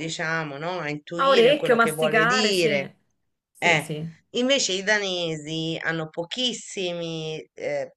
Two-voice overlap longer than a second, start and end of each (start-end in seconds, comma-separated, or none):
1.2-2.9